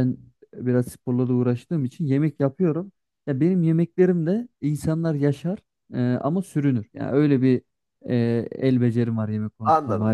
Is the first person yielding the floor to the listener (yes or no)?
yes